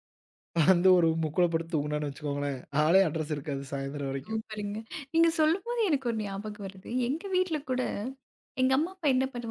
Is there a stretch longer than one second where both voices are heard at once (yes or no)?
no